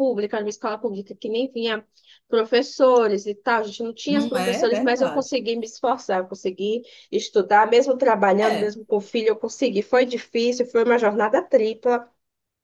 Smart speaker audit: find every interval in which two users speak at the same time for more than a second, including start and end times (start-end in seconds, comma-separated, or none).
4.1-5.4